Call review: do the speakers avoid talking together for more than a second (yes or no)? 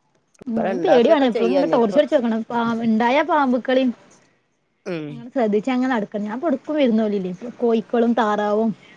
no